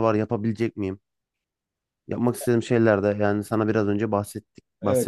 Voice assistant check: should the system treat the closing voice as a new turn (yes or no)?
yes